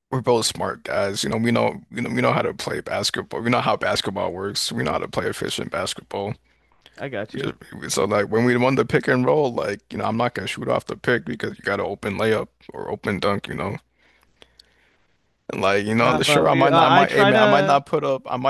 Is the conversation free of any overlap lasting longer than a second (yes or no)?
no